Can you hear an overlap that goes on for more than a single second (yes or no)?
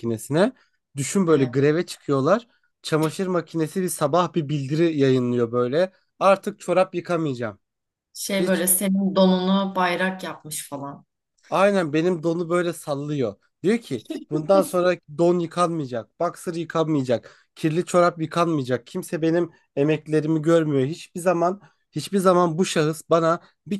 no